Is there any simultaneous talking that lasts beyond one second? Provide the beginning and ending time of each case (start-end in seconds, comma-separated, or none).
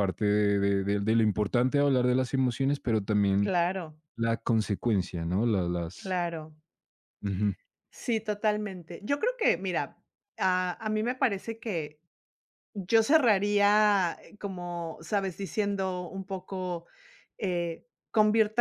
none